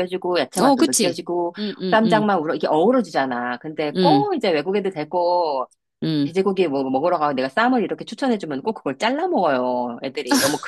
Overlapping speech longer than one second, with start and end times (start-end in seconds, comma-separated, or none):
none